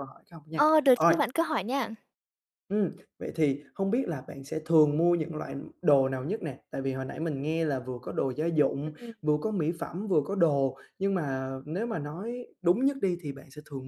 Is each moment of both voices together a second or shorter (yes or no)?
yes